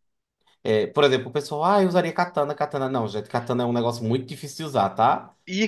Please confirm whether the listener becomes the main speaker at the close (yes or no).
yes